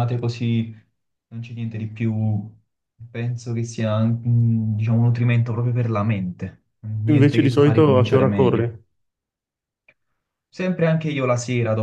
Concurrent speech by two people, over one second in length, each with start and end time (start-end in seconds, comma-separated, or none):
7.1-8.8